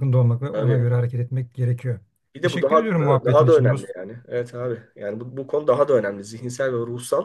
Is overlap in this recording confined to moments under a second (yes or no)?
no